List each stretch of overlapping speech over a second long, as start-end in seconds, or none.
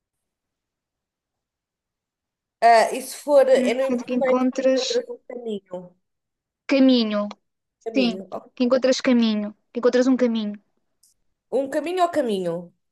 3.5-4.8